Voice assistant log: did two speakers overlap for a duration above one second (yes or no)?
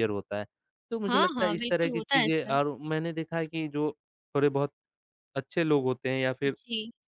yes